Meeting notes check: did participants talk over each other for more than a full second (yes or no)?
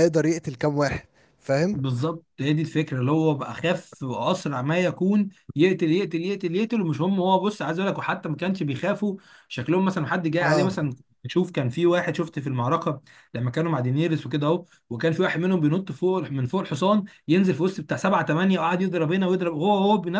no